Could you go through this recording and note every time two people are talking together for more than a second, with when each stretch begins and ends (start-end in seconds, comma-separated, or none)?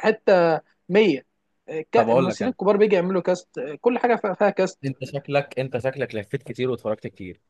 none